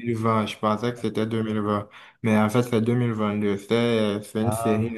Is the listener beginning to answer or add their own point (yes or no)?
no